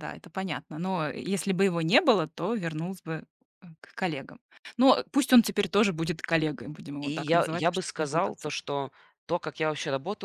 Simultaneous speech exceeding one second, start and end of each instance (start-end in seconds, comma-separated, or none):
7.0-8.5